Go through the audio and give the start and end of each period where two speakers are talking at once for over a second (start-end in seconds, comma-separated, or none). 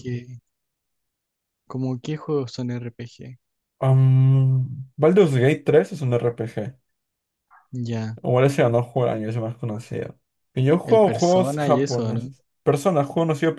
10.8-12.3